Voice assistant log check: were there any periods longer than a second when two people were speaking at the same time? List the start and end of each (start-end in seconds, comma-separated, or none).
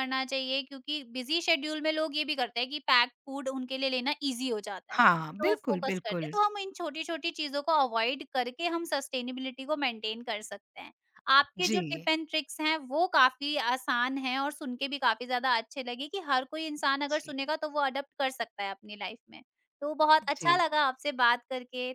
5.0-6.3